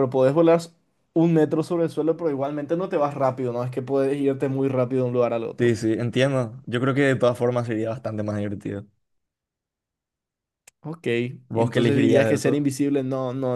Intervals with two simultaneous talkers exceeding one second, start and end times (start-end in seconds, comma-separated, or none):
11.5-12.7